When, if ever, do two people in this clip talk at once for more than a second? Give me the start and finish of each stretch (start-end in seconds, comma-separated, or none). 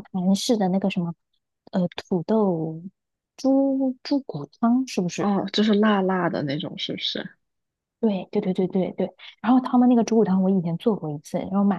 none